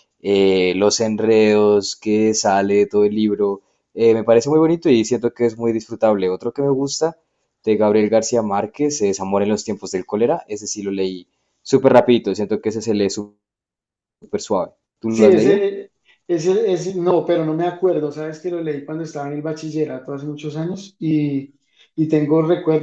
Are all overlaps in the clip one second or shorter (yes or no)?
yes